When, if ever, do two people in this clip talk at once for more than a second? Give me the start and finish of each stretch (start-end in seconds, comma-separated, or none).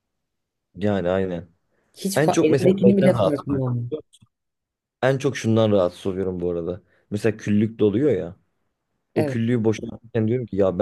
2.1-3.7